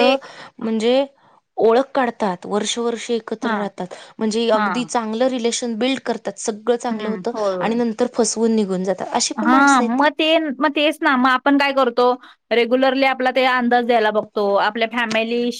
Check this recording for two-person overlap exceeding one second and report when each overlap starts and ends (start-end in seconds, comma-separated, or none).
none